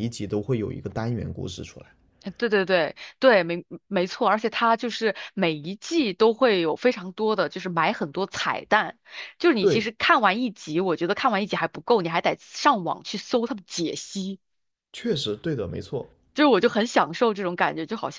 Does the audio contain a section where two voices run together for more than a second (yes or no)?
no